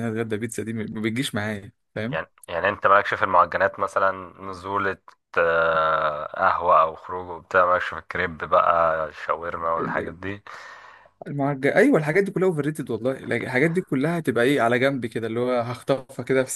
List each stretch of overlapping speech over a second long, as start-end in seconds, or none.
none